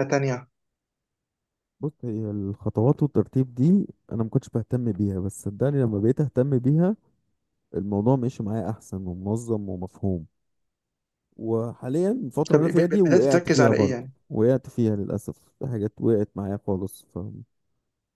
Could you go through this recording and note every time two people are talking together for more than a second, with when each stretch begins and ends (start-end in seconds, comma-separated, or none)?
12.5-14.1